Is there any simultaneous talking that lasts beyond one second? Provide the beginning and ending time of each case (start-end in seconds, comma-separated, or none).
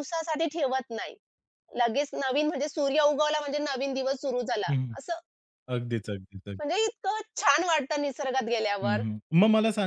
none